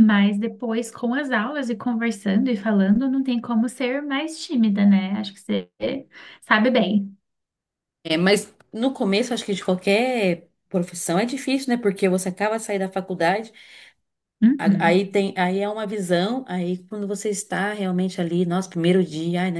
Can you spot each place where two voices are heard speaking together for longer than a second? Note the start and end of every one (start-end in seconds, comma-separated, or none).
none